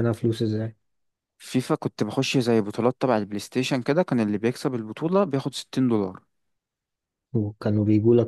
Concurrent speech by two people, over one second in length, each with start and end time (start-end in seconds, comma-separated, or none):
none